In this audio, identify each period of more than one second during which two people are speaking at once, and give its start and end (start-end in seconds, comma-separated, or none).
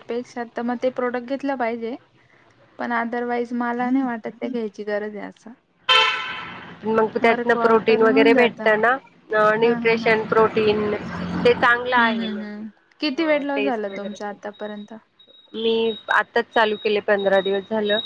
12.0-14.2